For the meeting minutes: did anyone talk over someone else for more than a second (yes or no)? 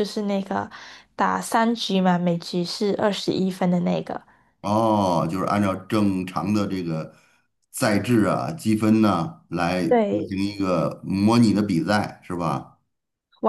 no